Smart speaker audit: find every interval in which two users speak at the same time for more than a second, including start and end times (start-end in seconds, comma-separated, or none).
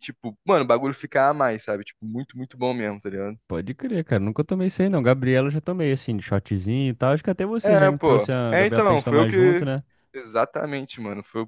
7.6-9.7